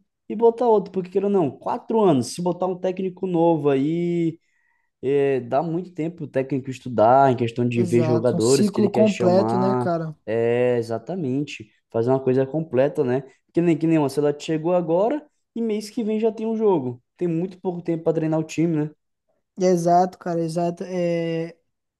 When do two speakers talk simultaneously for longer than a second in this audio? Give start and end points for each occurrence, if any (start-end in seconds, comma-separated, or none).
7.8-10.2